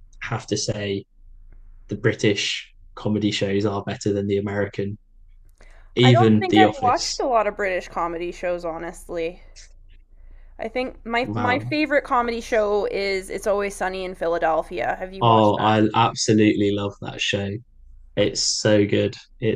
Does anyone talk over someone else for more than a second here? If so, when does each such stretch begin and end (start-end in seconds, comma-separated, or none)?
6.0-7.2